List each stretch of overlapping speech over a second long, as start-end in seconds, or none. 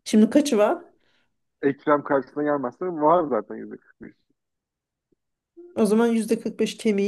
none